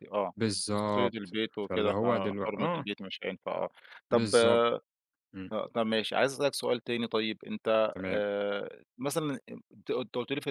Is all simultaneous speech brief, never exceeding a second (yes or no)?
no